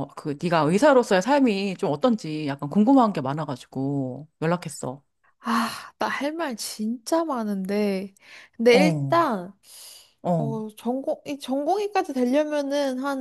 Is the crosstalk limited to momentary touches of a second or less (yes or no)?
yes